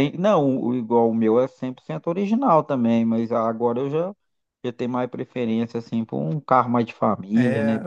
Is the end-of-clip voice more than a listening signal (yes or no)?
yes